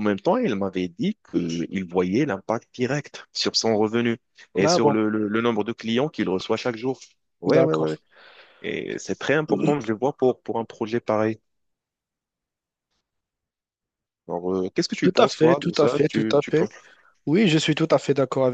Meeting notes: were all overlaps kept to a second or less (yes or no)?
no